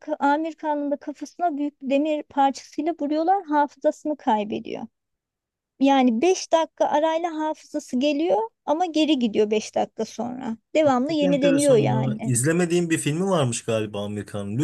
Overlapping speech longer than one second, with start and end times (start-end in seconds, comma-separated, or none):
10.8-12.3